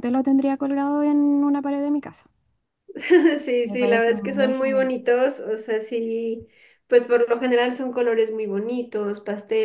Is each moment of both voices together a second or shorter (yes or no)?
no